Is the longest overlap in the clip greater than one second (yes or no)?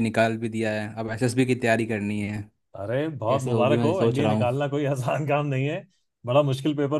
yes